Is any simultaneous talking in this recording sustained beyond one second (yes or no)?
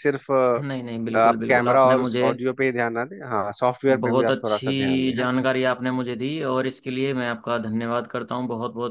yes